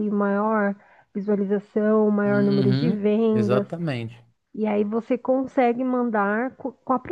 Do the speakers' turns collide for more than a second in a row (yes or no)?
yes